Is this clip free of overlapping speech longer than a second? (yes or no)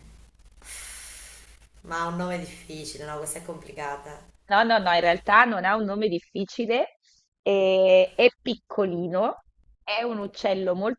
yes